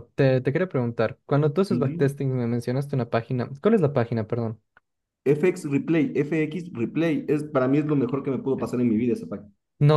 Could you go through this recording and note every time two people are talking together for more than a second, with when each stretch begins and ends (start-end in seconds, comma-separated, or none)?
none